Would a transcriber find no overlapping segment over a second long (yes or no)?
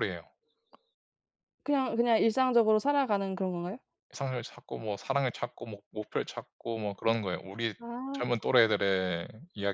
yes